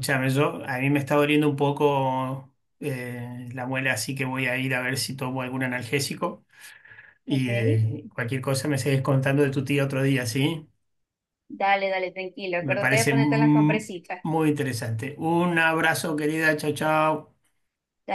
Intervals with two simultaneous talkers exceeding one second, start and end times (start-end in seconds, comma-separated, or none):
12.6-14.2